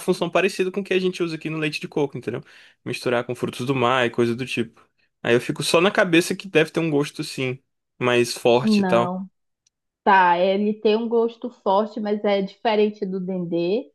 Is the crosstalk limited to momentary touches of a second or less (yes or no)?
yes